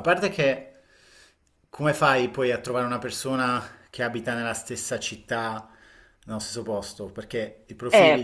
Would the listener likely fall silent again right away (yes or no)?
no